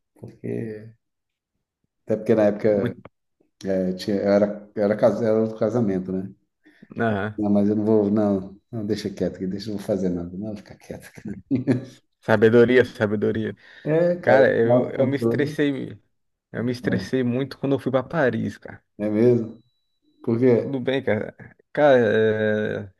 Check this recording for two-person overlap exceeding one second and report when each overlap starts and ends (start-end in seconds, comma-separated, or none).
14.2-15.6